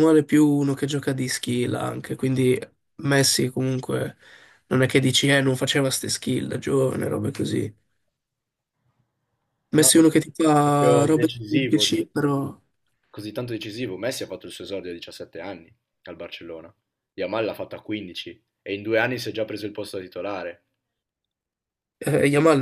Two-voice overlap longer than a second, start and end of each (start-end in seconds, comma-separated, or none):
10.6-12.0